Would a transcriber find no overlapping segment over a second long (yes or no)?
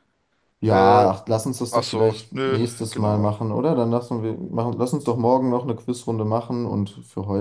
no